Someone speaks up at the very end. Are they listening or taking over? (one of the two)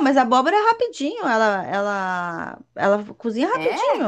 listening